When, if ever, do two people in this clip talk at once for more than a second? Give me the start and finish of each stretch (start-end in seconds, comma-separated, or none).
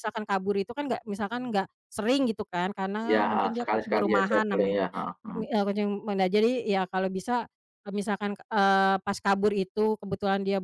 3.1-4.7